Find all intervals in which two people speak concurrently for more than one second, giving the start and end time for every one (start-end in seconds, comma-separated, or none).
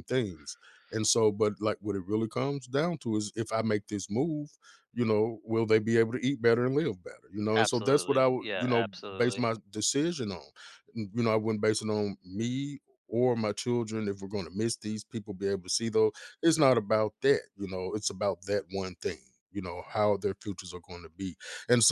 7.5-9.4